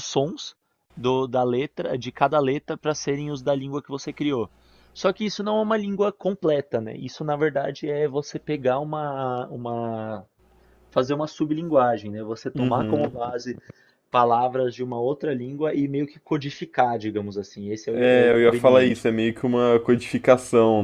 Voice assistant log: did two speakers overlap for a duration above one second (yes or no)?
yes